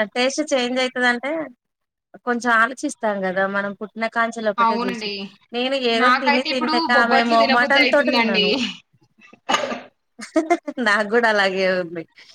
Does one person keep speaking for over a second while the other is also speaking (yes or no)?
yes